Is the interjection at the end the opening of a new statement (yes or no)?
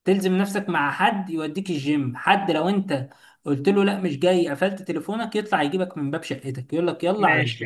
yes